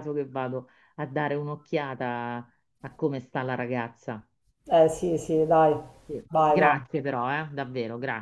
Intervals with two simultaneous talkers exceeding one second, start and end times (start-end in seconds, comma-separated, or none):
none